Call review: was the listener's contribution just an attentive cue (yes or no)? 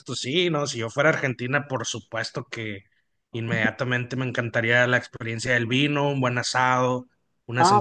no